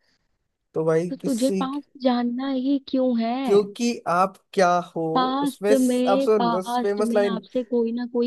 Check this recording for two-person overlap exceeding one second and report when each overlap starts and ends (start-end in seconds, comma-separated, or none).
5.4-7.4